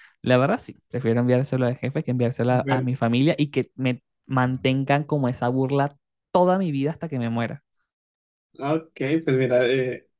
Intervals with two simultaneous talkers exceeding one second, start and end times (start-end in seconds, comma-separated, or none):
none